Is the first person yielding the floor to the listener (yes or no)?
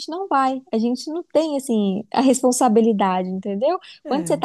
no